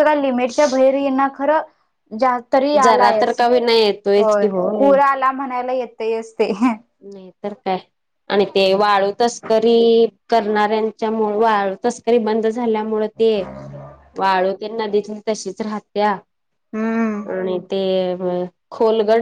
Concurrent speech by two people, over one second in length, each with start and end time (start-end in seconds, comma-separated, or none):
2.8-4.9